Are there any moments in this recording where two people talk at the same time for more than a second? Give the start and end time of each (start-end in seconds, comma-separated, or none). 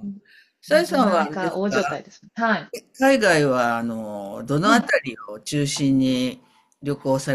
0.7-2.0